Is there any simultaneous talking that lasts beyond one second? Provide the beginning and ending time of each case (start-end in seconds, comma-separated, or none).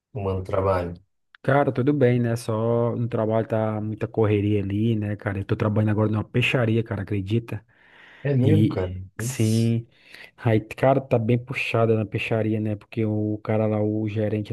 8.4-9.8